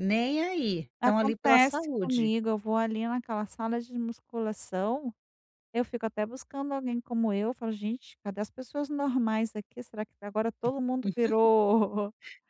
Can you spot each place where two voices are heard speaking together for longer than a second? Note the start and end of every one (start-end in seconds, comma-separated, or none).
1.0-2.3